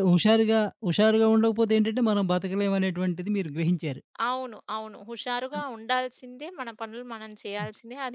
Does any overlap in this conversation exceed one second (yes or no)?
no